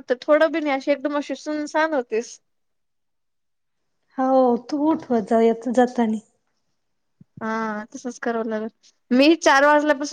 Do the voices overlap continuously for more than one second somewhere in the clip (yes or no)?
no